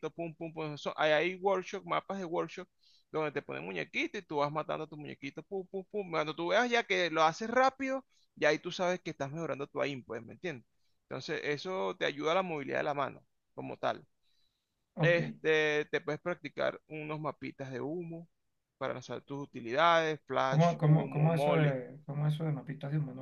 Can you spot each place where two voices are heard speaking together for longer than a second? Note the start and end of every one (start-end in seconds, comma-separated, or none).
20.4-21.8